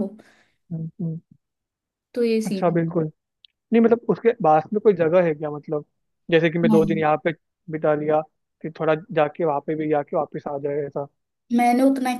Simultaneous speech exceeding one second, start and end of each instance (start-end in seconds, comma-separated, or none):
none